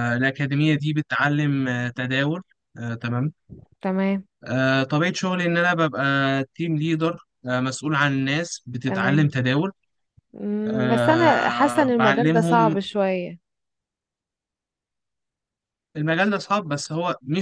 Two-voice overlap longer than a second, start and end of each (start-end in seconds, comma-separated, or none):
10.7-12.8